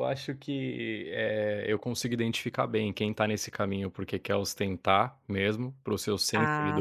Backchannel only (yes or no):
yes